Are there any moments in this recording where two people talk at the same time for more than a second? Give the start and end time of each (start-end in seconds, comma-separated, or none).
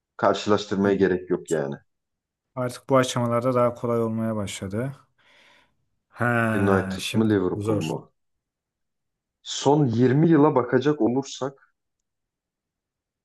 6.5-7.9